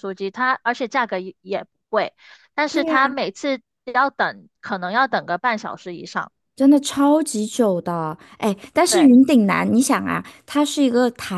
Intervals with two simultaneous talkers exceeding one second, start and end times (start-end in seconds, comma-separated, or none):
none